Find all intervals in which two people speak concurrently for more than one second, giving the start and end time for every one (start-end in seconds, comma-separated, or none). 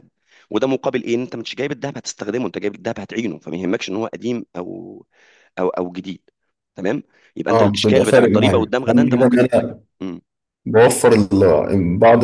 7.5-9.5